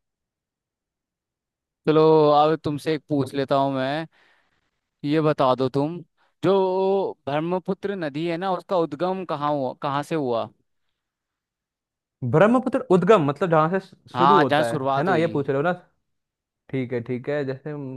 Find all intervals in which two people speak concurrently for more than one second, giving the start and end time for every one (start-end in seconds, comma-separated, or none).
14.1-15.5